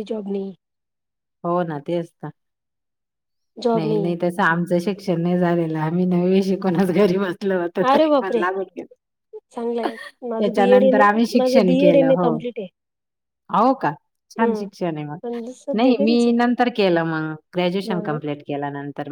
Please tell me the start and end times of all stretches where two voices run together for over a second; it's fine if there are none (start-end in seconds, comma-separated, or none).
10.4-12.3